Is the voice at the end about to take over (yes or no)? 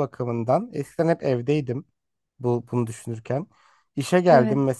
no